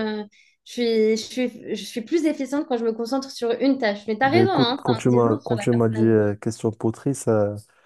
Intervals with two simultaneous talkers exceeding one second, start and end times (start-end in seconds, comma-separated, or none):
4.2-6.2